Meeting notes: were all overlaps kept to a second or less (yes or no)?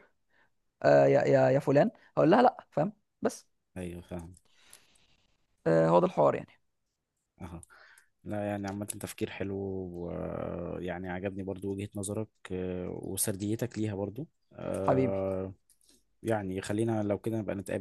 yes